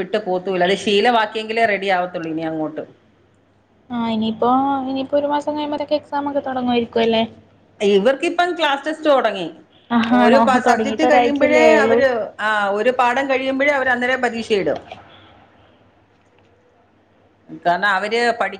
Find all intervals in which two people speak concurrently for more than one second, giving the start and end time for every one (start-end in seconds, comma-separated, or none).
10.2-12.0